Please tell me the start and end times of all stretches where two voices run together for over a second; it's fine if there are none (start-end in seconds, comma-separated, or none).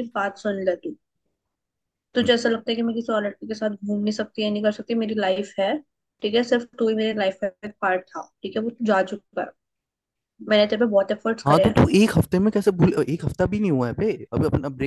none